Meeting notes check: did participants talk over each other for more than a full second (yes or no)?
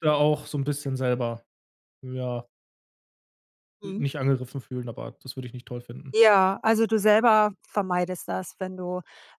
no